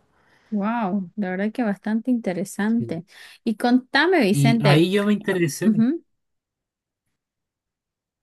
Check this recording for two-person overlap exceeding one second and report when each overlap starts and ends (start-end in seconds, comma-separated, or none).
none